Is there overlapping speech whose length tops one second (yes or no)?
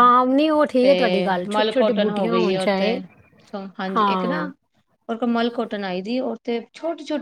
yes